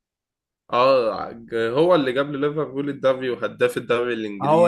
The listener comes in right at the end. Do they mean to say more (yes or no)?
yes